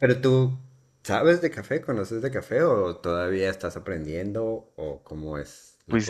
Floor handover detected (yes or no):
yes